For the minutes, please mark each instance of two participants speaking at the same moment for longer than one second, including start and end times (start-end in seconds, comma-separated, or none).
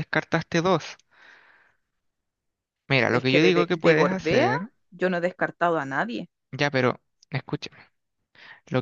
3.1-4.5